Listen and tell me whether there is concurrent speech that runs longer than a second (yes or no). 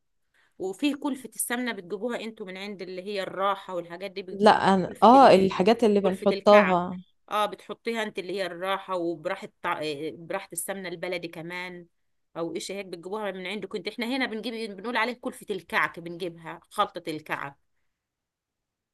yes